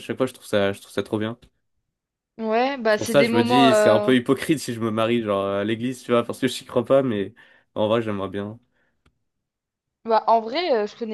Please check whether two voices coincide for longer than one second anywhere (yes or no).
yes